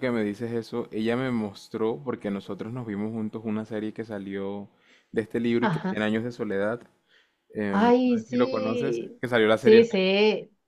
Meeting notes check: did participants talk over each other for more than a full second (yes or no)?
yes